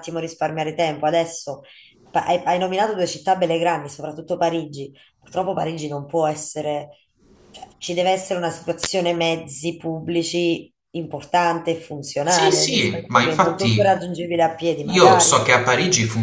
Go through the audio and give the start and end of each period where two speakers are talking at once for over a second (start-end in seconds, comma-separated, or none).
12.2-14.0